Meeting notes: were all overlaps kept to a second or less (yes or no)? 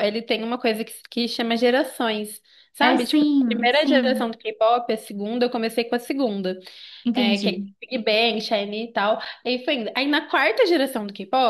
no